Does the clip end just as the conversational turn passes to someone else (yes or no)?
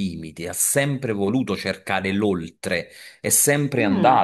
no